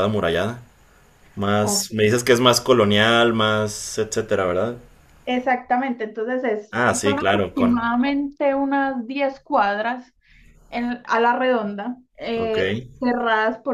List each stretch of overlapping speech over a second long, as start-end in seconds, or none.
6.7-7.9